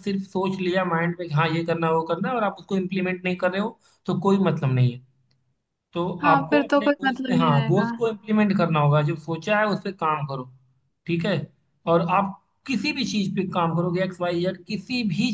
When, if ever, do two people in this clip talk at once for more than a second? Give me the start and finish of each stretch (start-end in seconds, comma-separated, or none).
6.2-7.9